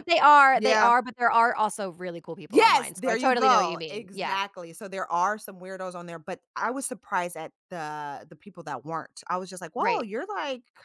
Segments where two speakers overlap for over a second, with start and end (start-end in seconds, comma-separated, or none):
2.5-4.4